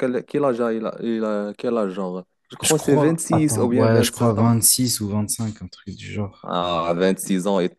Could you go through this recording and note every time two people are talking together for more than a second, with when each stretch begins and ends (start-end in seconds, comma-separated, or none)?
2.6-4.6